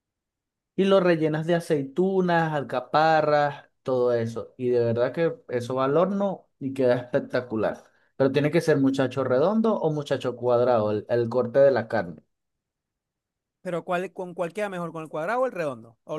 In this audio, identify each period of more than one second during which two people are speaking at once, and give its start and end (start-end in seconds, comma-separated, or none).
none